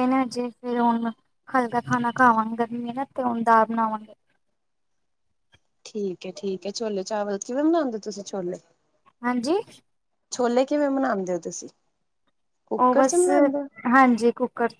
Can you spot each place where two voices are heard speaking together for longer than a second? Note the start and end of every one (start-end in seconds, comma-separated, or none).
none